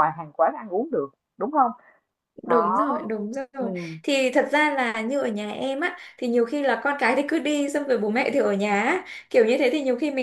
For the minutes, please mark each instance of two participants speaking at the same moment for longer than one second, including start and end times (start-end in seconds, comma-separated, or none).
none